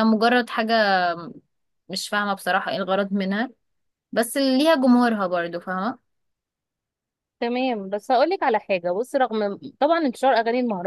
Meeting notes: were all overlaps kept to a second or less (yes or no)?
yes